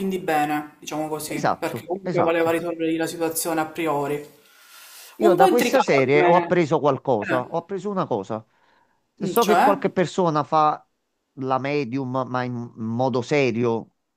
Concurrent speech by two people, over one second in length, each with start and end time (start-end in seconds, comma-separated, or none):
1.2-2.6, 5.2-6.5